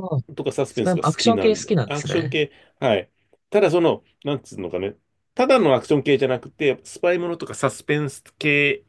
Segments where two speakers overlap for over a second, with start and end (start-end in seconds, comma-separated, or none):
0.7-2.4